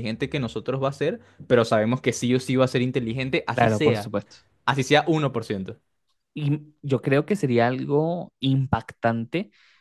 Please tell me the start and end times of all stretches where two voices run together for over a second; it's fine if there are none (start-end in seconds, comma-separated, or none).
none